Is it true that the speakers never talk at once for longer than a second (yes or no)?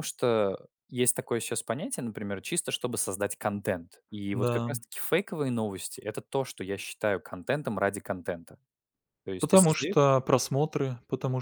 yes